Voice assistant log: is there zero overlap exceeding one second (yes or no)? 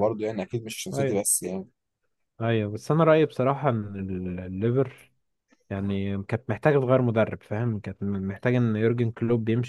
yes